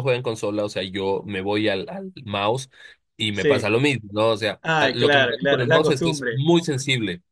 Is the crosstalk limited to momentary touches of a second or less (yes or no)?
no